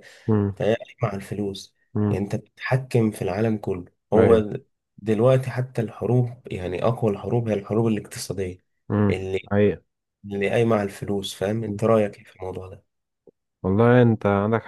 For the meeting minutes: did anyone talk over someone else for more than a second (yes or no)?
no